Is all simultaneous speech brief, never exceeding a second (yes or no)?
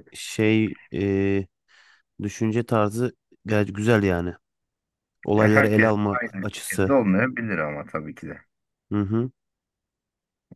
no